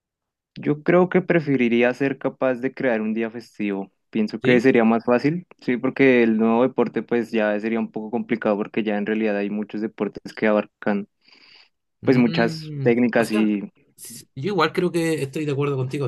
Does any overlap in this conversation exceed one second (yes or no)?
yes